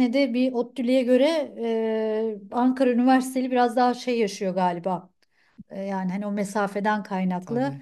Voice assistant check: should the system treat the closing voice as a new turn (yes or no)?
no